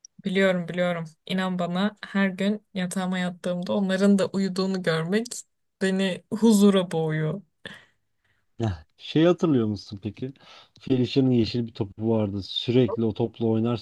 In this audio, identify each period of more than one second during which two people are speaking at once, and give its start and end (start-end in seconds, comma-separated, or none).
none